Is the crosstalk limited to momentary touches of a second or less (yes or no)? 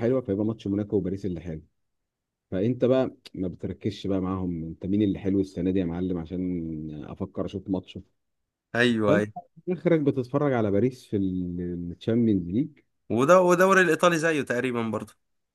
yes